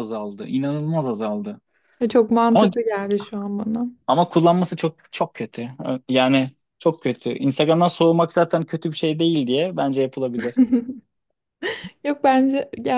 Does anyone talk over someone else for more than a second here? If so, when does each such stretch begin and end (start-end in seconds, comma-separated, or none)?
none